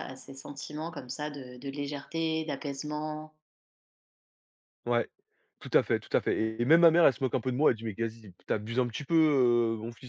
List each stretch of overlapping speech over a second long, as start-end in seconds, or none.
none